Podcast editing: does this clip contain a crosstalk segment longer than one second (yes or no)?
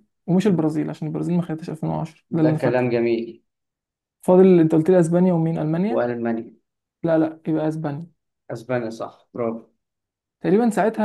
no